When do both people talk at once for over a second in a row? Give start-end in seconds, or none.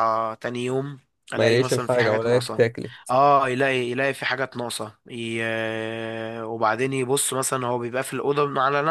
1.4-2.6